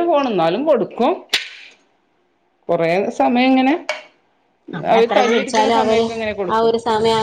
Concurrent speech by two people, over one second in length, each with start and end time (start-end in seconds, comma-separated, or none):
none